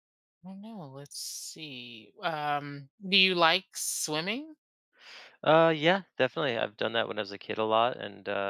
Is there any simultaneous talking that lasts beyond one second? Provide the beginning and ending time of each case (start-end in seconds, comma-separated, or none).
none